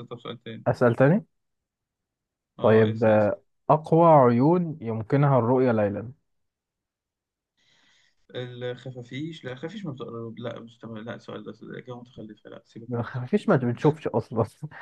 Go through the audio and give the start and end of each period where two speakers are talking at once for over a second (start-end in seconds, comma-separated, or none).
none